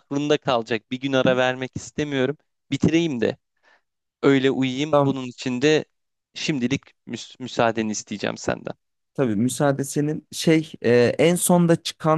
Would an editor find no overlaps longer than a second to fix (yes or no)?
yes